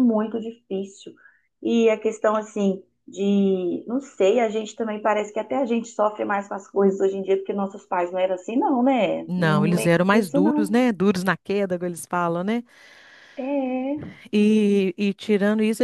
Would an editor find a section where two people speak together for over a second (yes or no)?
yes